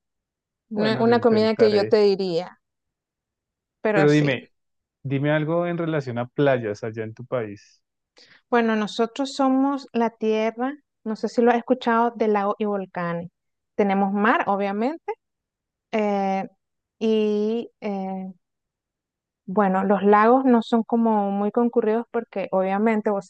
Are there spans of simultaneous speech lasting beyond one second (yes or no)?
yes